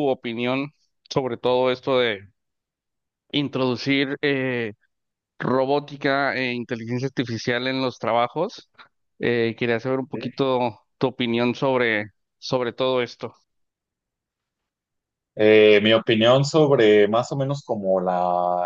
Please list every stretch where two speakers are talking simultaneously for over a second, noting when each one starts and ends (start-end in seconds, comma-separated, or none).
none